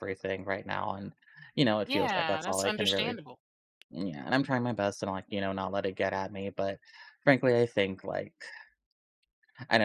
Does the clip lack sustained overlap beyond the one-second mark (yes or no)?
no